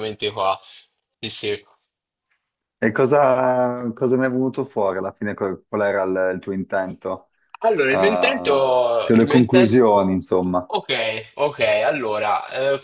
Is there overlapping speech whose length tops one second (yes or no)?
yes